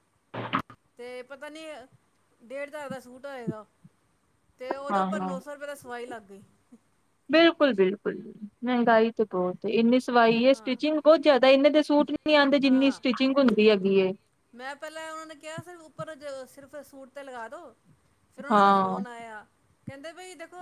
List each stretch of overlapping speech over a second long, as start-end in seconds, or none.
none